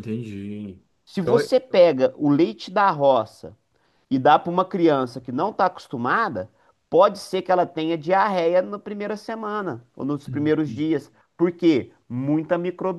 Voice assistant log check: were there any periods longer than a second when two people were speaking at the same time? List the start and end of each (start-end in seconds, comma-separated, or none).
none